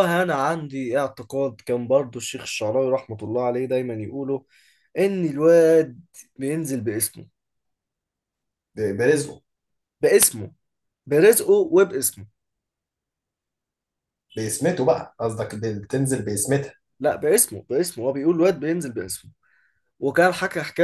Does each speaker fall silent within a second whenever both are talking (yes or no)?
yes